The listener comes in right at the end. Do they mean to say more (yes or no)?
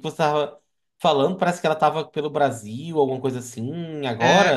yes